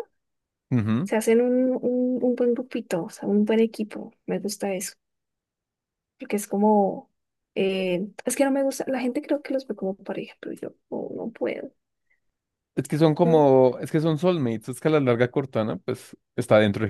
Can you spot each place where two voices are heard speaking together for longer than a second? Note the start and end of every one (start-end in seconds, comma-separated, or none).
none